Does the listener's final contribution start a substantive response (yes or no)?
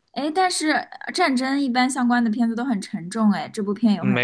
yes